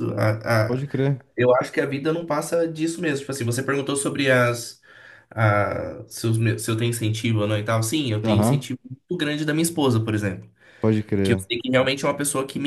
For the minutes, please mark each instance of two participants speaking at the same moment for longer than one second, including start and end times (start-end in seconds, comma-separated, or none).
none